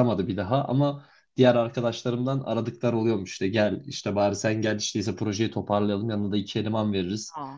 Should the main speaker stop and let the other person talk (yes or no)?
no